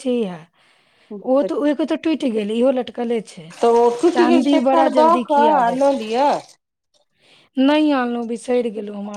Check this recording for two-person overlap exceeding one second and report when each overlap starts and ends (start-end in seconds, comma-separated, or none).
4.2-5.9